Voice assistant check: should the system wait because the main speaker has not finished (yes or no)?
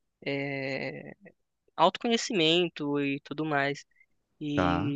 yes